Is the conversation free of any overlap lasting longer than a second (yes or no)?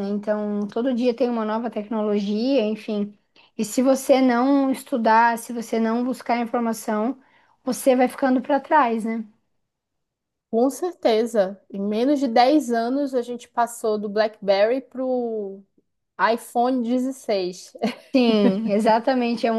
yes